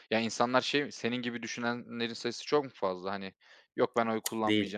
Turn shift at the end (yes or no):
yes